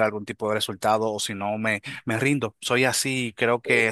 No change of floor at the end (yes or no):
no